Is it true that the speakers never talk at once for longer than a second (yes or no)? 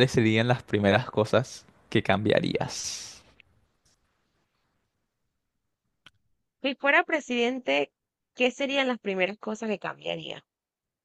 yes